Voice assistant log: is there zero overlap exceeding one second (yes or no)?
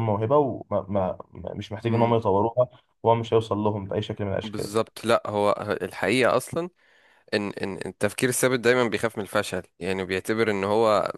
yes